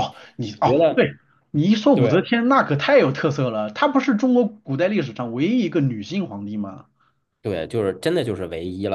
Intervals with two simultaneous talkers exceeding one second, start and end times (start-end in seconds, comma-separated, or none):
none